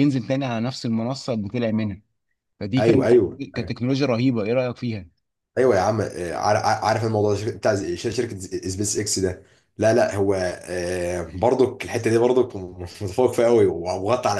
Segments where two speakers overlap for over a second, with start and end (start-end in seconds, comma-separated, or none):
none